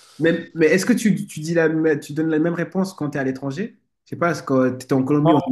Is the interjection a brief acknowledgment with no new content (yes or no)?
yes